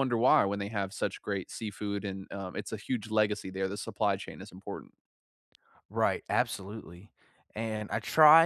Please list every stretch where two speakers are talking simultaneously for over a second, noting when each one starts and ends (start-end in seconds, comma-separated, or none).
none